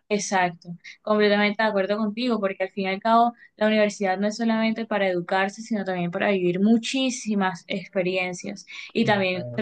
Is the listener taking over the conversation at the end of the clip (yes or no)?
no